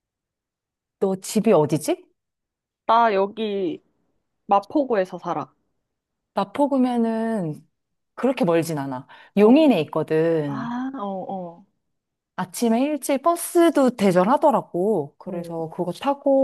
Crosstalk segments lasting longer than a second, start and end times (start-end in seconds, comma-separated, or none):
none